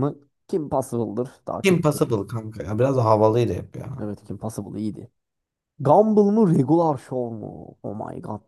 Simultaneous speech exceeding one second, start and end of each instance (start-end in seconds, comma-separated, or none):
none